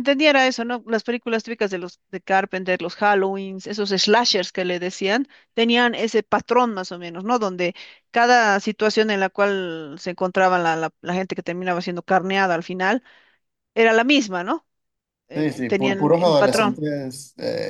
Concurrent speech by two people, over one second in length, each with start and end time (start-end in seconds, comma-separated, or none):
15.3-16.8